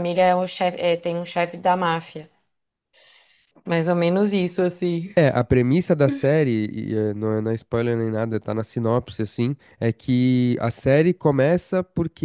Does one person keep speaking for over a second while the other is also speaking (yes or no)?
no